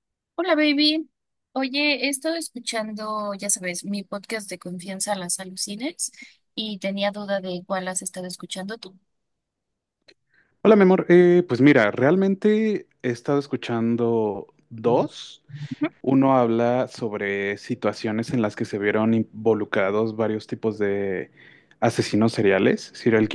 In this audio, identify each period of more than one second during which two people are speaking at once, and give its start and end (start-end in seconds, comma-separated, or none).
none